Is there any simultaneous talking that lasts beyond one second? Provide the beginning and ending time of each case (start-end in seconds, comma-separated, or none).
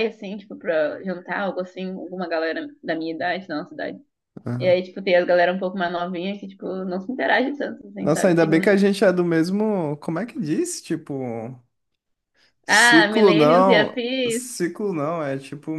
12.7-14.6